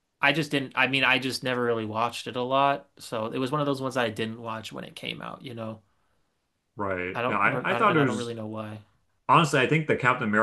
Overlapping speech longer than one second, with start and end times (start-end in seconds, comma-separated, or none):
7.1-8.3